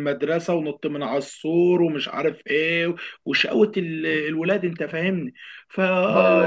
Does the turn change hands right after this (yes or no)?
no